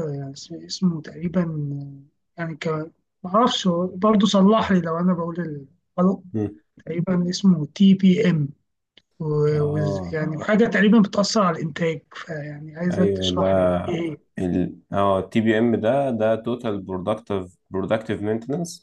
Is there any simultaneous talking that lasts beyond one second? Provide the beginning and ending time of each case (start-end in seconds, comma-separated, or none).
none